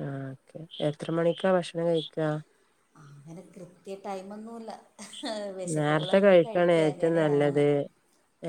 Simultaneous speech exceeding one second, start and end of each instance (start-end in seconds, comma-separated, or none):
5.8-7.6